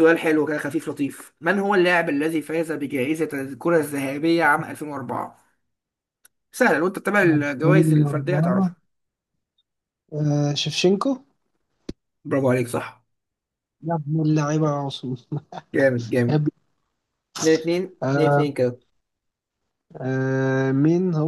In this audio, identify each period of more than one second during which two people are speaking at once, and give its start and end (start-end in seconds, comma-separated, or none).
7.2-8.7